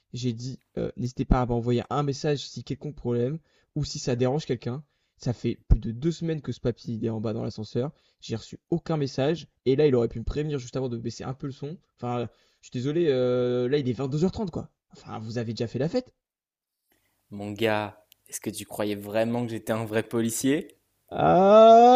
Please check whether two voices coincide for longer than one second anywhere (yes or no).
no